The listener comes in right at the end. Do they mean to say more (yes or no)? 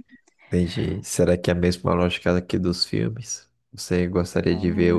no